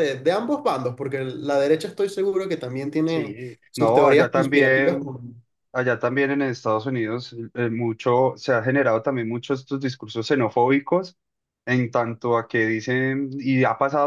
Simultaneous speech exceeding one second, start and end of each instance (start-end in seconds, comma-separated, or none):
3.0-5.0